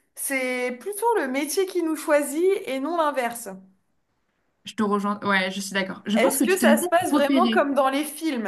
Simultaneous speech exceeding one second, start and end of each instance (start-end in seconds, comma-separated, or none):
6.1-7.6